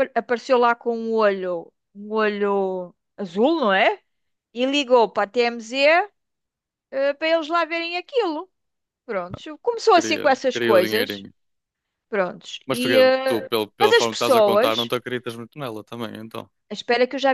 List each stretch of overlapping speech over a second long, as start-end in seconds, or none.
9.9-11.3, 12.7-14.9